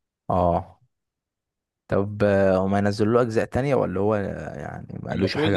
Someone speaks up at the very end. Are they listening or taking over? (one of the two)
taking over